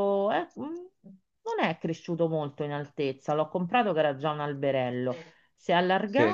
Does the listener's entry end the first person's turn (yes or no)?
no